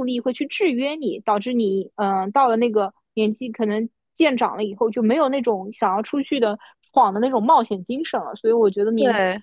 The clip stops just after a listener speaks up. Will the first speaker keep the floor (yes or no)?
yes